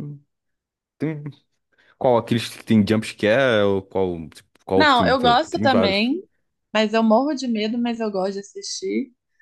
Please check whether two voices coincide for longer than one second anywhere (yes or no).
yes